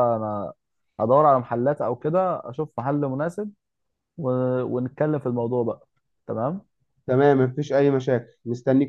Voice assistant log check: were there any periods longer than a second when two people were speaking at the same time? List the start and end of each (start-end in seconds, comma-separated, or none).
none